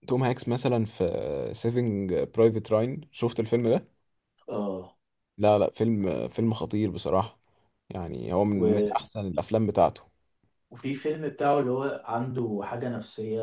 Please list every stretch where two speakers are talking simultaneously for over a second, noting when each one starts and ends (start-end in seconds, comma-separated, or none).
none